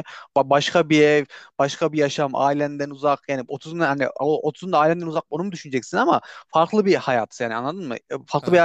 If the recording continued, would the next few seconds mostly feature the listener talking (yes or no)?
no